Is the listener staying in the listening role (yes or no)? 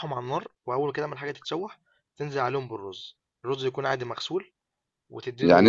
no